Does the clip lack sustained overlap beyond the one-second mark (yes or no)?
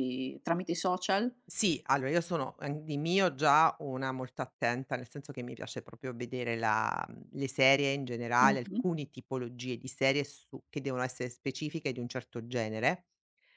yes